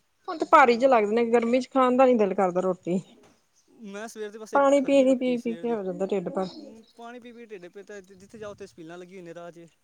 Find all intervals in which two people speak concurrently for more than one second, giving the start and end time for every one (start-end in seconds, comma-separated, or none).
4.5-6.5